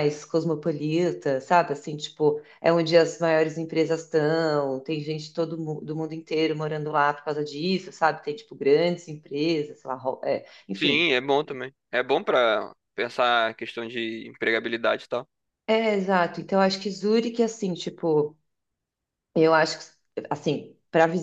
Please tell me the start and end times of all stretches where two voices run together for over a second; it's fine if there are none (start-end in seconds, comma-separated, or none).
none